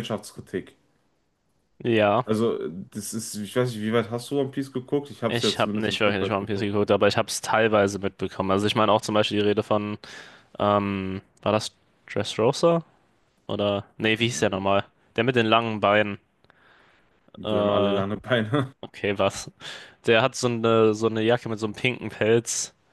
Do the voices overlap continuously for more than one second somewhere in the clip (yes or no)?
yes